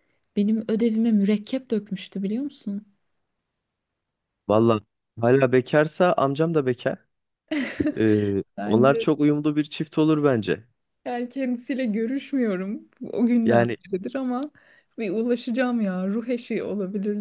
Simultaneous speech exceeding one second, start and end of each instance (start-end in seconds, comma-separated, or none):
none